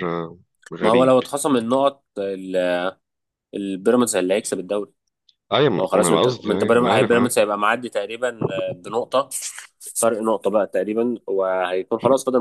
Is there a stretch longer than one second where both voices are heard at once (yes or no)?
yes